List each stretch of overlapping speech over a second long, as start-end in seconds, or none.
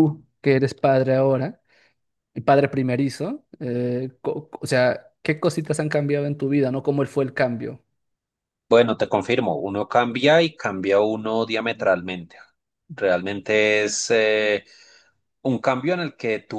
none